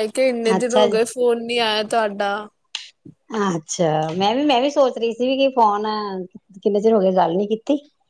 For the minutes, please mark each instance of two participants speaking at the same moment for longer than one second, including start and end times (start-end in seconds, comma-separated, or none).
none